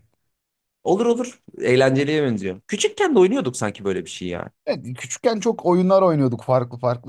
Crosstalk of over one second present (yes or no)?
no